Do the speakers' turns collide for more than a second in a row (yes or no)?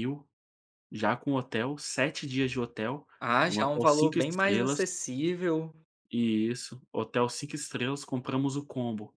yes